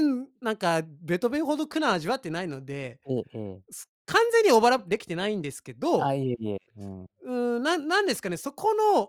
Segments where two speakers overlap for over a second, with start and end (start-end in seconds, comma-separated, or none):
none